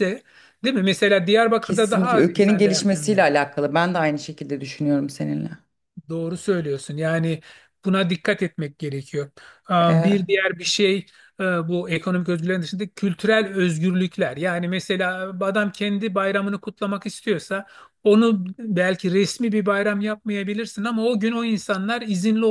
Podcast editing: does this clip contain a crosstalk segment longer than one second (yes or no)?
yes